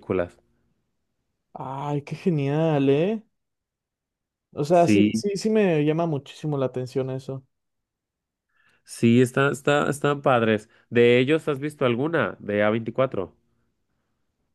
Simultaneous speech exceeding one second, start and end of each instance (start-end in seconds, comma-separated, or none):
none